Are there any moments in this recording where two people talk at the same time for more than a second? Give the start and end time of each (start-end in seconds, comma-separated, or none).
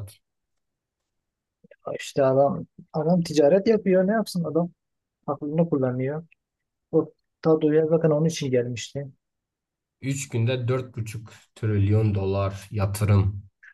none